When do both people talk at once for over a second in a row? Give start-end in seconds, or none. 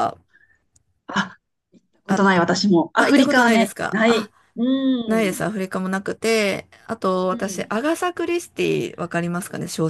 3.0-4.3